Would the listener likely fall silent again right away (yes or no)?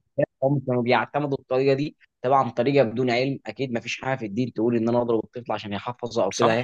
no